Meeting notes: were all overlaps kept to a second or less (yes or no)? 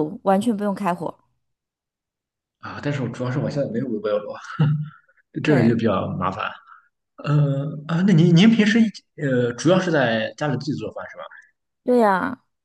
yes